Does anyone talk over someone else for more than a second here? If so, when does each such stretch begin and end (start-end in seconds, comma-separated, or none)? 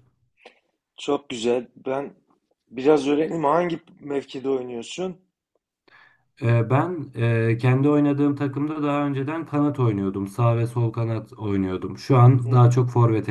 none